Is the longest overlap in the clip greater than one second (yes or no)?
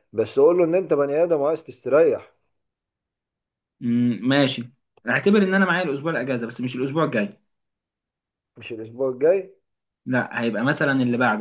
no